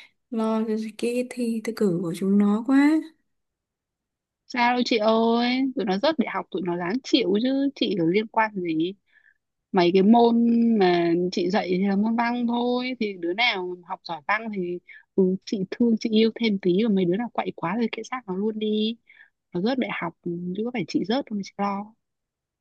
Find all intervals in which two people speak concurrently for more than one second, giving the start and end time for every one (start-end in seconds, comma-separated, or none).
none